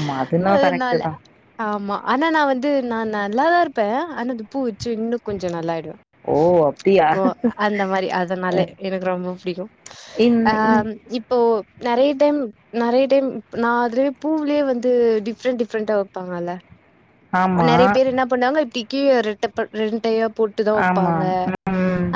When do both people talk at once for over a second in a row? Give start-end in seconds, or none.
none